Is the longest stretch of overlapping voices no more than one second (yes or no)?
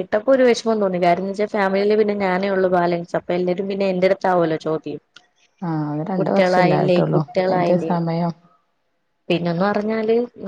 no